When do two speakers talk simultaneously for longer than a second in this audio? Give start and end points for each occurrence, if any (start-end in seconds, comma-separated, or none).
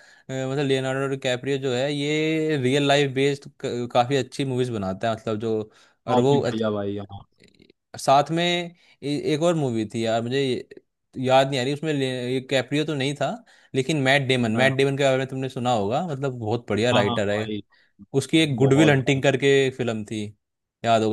none